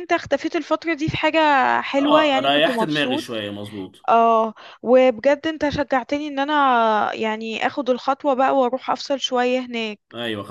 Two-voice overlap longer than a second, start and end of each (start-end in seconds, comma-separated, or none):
2.0-3.2